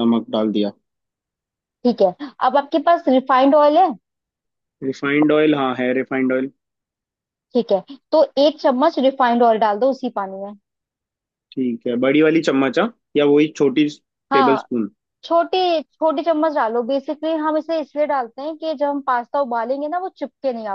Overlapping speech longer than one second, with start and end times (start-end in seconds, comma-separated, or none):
none